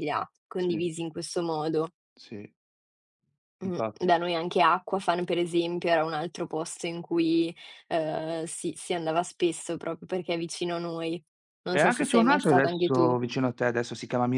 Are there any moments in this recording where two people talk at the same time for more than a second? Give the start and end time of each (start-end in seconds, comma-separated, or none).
11.7-13.1